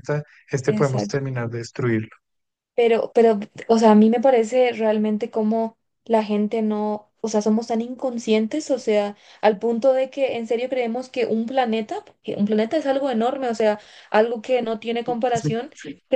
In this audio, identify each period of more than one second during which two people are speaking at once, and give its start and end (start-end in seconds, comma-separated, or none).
none